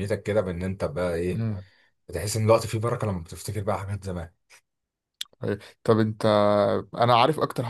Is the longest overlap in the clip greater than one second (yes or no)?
no